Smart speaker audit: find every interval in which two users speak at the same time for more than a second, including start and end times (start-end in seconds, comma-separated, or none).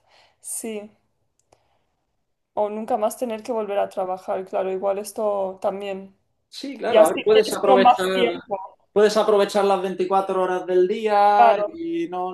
6.9-8.1